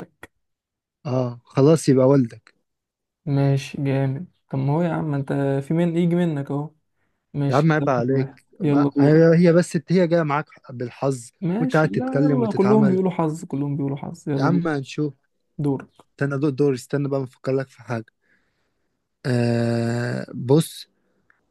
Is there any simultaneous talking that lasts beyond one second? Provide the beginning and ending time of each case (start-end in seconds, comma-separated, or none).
7.5-9.2, 11.4-13.0